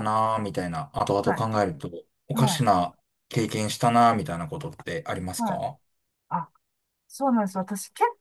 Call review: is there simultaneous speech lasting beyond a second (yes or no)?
no